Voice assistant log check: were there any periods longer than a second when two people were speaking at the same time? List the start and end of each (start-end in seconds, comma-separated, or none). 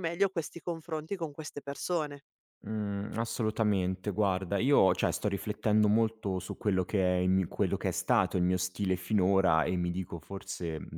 none